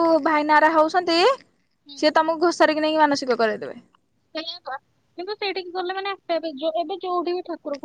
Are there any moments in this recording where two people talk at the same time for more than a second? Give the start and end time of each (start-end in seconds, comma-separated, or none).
none